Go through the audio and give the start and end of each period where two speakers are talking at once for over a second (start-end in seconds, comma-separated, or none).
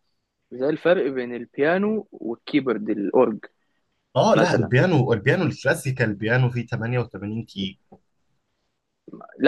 none